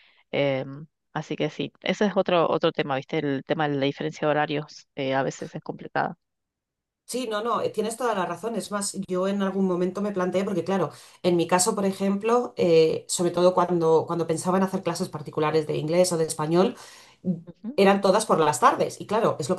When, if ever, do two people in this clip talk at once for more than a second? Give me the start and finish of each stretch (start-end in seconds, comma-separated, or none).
none